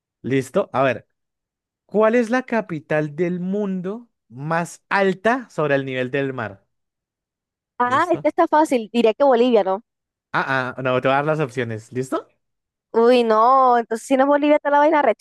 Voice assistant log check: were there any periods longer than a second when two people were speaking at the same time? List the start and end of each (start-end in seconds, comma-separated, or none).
none